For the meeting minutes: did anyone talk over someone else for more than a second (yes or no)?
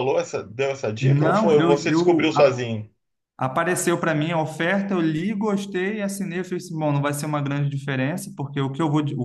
yes